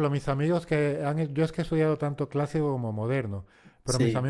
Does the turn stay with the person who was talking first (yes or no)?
yes